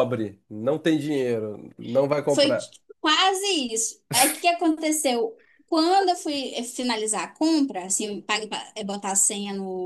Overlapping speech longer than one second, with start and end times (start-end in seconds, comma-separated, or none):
none